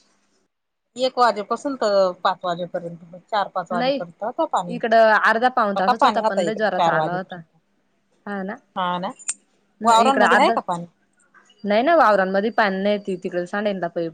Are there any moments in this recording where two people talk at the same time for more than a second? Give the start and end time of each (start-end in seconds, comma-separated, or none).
5.8-7.4